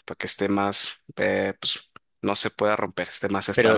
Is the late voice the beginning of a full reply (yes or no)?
yes